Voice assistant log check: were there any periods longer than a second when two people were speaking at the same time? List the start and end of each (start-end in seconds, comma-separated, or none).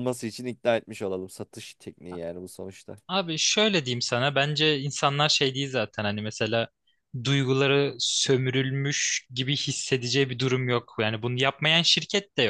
none